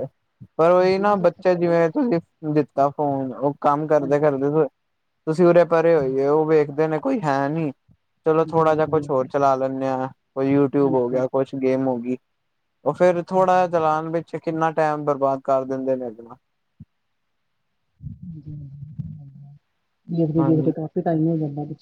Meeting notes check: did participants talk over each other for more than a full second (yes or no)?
no